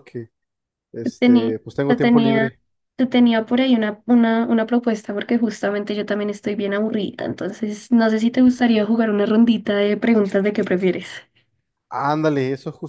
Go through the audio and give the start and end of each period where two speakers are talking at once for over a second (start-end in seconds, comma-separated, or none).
1.0-2.6